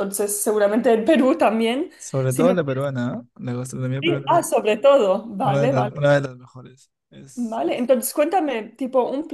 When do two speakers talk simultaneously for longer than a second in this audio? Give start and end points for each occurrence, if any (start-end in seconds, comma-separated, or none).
none